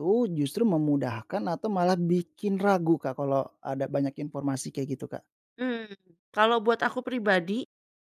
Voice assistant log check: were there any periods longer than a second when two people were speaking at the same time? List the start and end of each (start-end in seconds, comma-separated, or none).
none